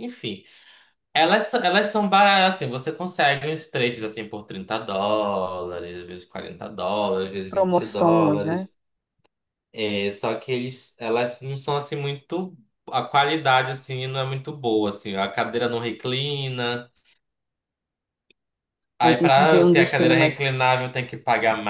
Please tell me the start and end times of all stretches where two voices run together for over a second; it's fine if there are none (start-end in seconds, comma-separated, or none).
7.4-8.7, 19.0-20.4